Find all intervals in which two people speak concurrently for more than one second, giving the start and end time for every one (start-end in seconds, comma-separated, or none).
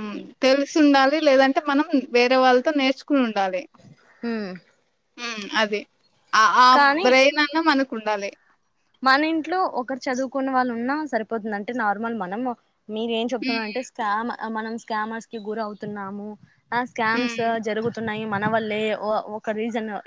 none